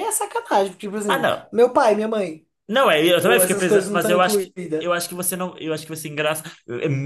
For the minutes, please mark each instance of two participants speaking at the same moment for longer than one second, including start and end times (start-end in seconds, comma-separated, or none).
3.2-4.9